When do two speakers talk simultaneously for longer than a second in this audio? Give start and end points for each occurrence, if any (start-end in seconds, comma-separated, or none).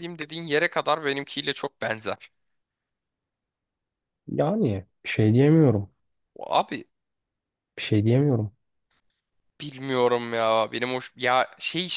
none